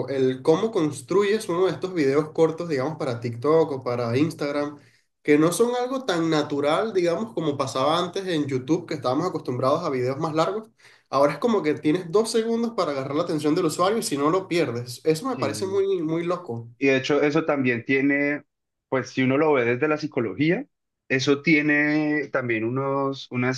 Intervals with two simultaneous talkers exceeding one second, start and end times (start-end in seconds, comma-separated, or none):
none